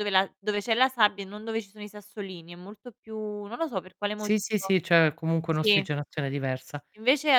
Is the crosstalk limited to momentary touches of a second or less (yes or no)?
yes